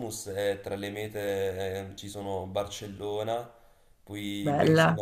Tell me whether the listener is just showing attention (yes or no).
yes